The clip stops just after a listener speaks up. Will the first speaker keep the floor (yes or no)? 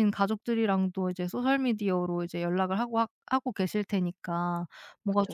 yes